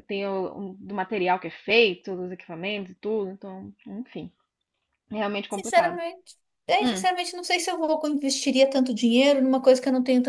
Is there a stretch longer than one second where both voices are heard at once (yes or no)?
no